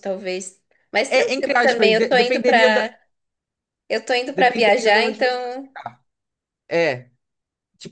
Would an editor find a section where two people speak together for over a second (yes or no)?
yes